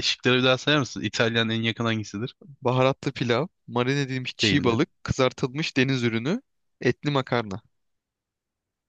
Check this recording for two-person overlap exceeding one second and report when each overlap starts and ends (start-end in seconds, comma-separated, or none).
none